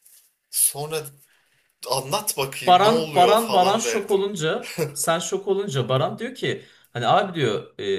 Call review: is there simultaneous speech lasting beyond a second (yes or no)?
yes